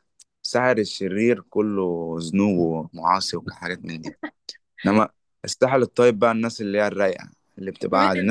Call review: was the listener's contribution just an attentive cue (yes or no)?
no